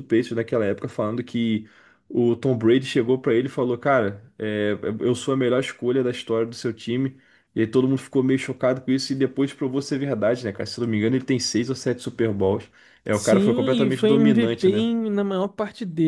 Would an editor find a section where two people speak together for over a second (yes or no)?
yes